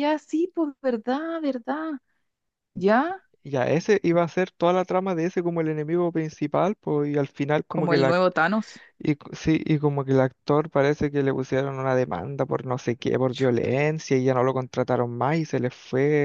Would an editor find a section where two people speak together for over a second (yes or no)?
no